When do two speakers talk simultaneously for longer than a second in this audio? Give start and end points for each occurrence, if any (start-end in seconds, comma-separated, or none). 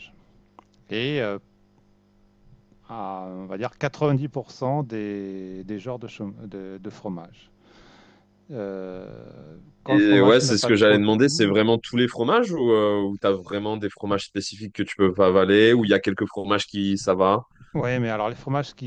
9.9-11.6